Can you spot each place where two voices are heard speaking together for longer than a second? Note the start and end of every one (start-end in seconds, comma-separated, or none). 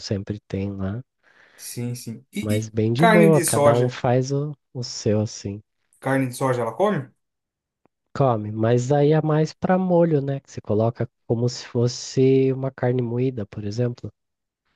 2.4-4.0